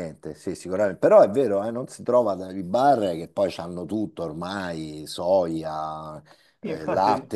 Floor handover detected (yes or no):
no